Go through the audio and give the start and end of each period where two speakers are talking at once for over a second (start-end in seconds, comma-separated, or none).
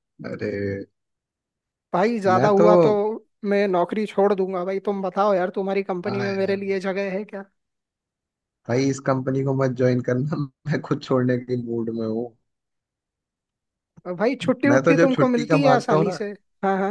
14.7-16.2